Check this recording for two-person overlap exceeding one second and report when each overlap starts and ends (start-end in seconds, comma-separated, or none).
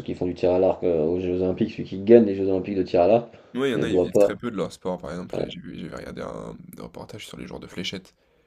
none